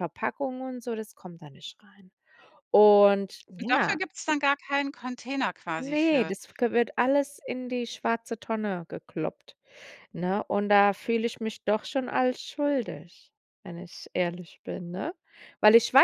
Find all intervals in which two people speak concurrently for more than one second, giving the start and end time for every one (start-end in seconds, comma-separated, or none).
none